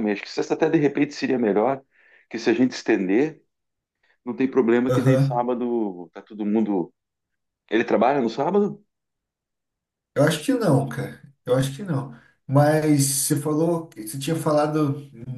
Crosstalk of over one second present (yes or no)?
no